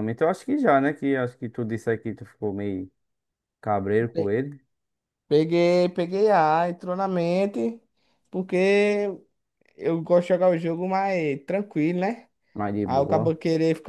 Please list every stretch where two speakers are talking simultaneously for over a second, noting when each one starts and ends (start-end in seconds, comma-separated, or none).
none